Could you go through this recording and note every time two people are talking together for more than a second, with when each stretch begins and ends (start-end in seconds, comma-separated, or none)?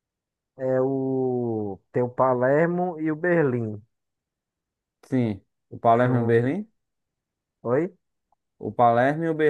none